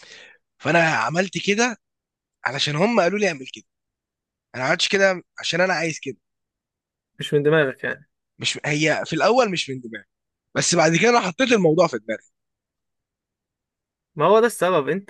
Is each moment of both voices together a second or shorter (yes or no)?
yes